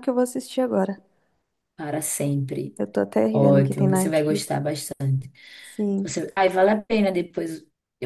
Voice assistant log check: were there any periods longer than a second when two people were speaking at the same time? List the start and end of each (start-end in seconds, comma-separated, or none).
3.3-4.6